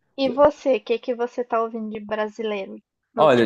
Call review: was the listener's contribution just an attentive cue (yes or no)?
no